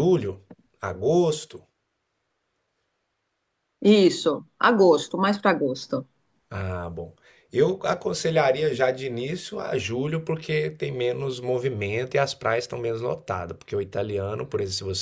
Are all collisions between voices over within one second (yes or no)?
yes